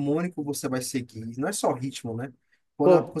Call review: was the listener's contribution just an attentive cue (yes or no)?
yes